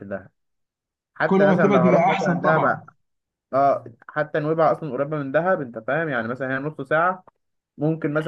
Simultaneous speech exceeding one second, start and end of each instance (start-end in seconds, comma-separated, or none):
1.3-2.8